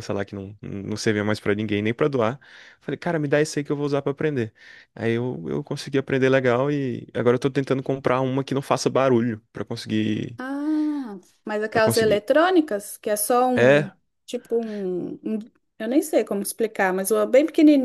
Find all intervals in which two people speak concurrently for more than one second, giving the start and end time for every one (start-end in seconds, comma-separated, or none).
none